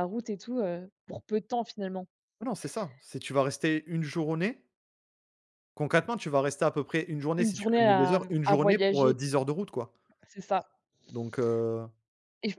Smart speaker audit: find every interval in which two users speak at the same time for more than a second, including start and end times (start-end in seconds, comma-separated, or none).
7.4-9.2